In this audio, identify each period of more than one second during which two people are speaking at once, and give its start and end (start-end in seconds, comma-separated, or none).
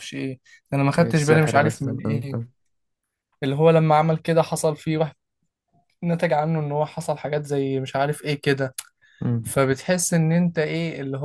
1.0-2.5